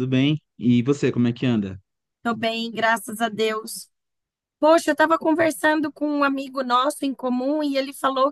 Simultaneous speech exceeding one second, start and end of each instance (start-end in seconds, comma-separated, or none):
none